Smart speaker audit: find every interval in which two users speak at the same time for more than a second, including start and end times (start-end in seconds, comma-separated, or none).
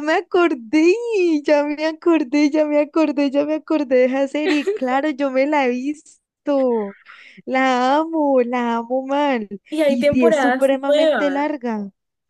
9.9-11.5